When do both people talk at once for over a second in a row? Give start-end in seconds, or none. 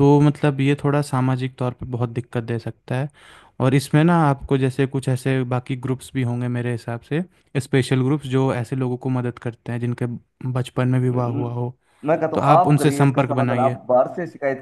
12.3-13.8